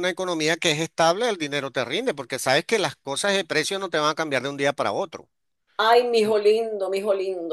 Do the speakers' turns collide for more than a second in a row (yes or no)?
no